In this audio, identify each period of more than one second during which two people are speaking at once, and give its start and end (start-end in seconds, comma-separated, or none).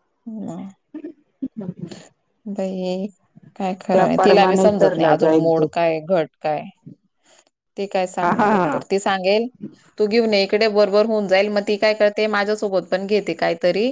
3.9-5.6